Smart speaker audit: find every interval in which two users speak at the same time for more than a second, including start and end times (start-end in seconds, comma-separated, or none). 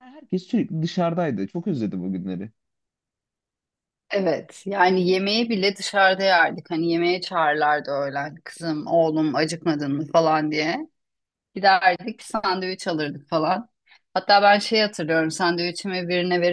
none